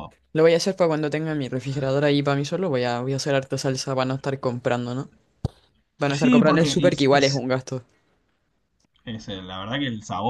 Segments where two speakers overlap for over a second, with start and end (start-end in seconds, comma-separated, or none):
6.1-7.5